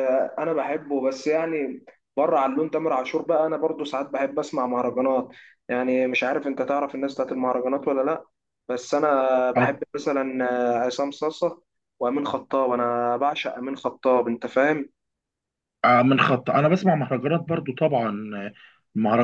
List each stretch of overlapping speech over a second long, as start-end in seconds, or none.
none